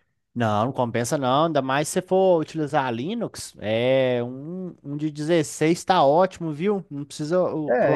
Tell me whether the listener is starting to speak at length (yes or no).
yes